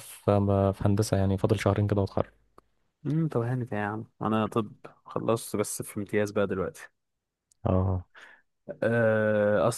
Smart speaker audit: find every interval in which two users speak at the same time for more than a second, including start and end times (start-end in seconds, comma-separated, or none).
none